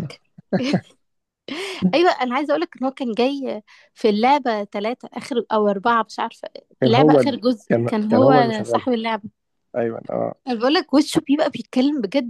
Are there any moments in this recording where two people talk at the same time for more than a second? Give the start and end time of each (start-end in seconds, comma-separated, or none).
6.8-8.8